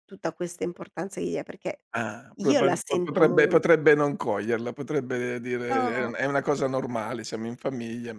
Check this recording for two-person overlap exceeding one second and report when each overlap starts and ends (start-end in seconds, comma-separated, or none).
2.4-3.6